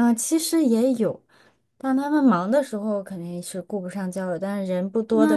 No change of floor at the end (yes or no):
no